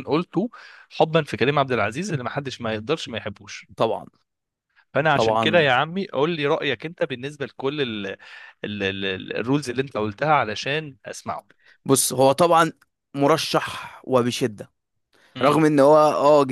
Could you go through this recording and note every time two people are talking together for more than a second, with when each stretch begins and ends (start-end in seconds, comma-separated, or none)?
none